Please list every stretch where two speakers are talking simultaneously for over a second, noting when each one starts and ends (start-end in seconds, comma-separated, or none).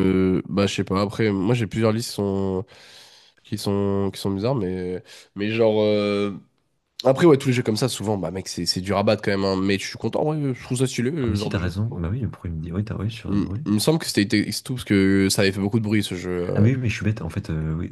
none